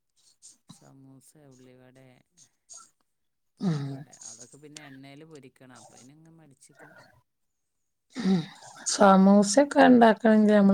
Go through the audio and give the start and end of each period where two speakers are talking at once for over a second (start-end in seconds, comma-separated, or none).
none